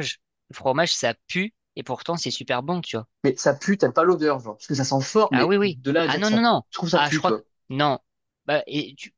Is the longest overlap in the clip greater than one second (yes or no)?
yes